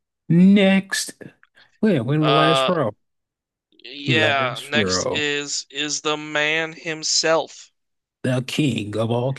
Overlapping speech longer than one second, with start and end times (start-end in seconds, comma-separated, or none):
4.1-5.3